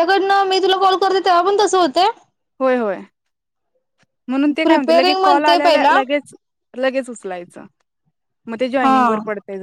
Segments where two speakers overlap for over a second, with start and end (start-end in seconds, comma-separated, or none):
4.6-5.9